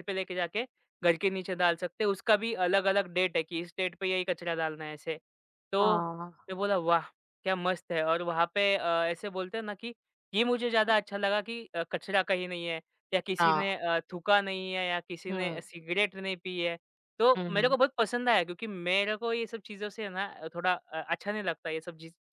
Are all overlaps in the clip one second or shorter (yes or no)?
yes